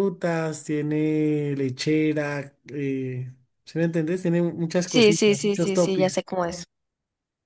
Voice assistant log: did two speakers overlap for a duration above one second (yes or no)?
yes